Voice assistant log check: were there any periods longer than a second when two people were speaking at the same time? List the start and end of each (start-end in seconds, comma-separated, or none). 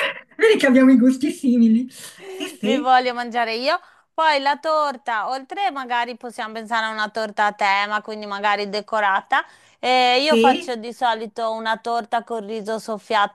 none